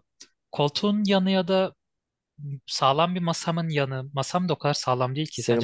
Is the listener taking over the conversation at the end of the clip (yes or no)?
yes